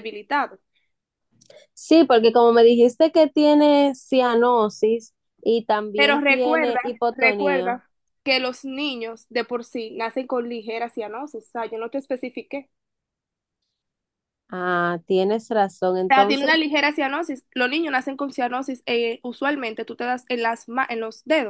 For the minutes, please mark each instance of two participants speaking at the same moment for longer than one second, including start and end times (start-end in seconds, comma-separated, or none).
5.9-7.8